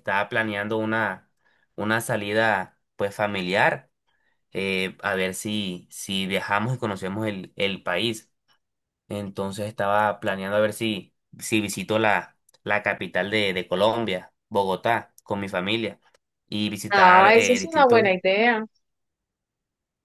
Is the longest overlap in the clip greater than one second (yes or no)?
yes